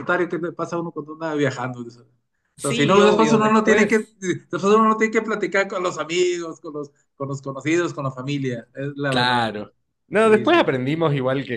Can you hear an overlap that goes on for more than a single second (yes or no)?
yes